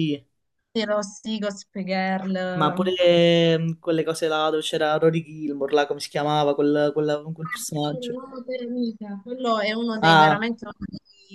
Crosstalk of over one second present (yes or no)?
no